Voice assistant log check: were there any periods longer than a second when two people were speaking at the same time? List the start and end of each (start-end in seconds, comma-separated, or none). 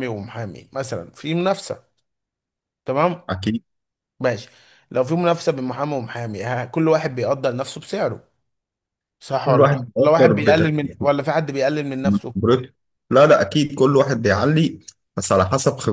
9.4-11.0